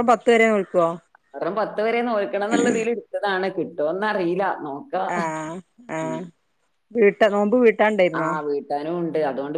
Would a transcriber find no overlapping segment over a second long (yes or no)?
yes